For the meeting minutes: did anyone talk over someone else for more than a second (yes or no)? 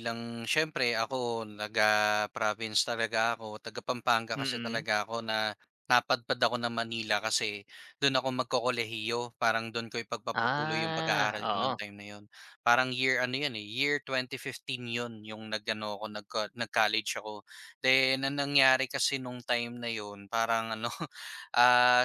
yes